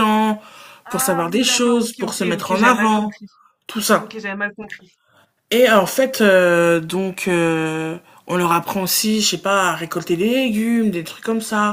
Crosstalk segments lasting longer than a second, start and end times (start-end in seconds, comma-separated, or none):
0.9-3.2